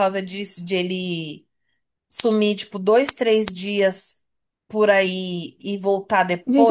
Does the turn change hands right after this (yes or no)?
yes